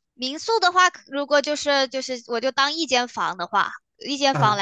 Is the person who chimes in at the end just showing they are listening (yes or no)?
yes